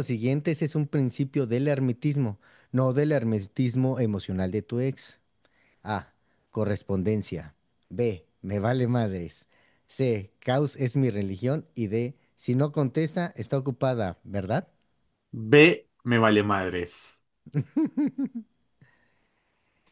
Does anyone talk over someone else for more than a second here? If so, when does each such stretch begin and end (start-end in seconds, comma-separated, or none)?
none